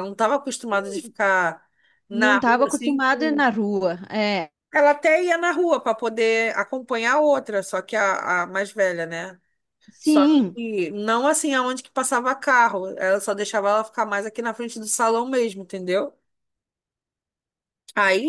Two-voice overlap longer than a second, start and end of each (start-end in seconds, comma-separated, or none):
2.1-3.4